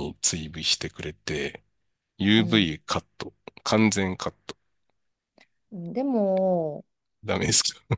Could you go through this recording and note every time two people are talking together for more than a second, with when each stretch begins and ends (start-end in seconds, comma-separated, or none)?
none